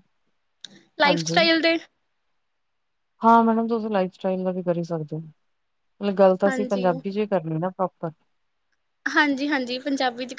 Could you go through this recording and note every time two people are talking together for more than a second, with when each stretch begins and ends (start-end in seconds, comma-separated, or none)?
none